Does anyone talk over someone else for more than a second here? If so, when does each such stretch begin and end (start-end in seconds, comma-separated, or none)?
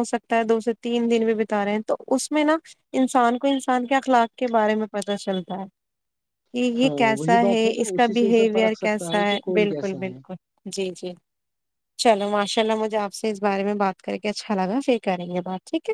6.8-10.3